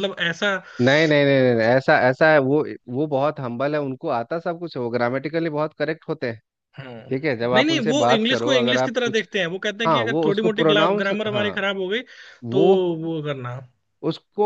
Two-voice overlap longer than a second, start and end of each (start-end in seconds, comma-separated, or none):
7.5-9.2, 9.9-11.5